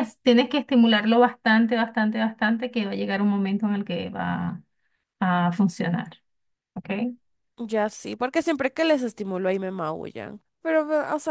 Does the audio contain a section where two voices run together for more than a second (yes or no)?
no